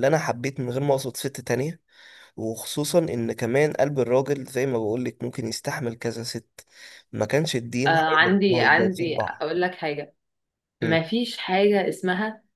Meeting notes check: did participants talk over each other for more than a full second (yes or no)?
yes